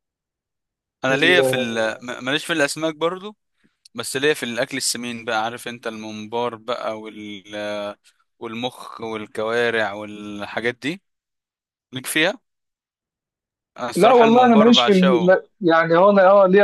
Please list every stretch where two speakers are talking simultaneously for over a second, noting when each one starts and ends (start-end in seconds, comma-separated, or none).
14.0-15.3